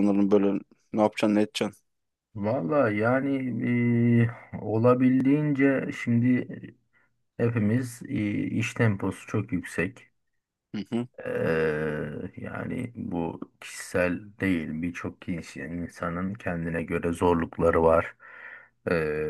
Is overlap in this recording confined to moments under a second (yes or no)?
yes